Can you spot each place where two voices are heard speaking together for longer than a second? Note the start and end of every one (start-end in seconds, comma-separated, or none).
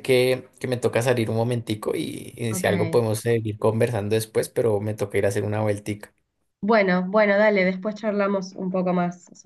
none